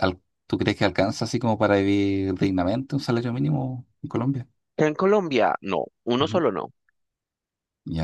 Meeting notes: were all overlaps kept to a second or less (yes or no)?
yes